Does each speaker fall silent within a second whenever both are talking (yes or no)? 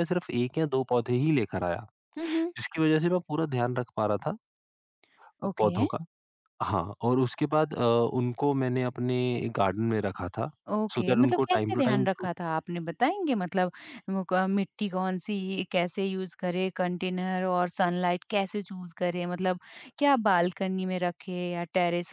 no